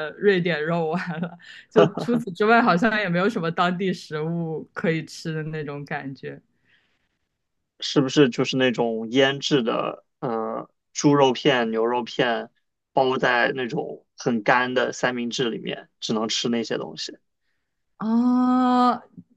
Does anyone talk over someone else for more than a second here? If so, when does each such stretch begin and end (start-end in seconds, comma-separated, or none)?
none